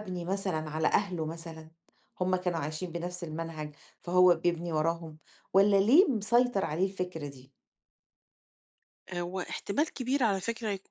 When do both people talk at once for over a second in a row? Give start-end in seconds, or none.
none